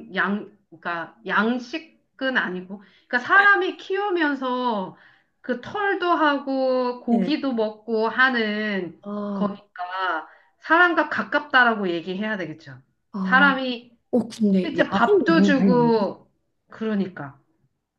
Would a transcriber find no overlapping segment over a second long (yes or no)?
no